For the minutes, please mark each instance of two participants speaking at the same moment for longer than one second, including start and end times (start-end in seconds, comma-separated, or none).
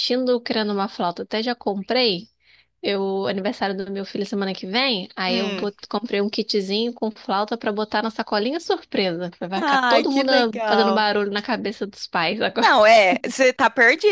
9.6-11.1